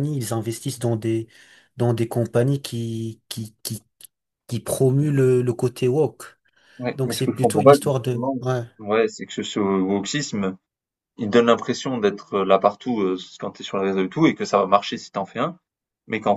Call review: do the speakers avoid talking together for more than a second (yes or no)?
no